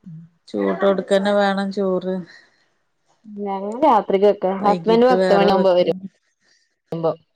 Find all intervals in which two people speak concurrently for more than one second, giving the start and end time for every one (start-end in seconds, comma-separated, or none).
4.6-6.0